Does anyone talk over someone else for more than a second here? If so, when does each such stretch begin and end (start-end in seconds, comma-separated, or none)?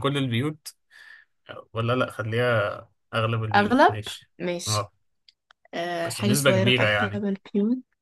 6.0-7.2